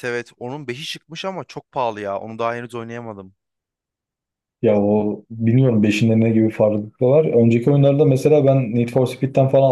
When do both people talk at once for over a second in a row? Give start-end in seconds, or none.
none